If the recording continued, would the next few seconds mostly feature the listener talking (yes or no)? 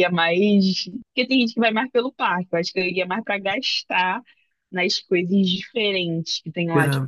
no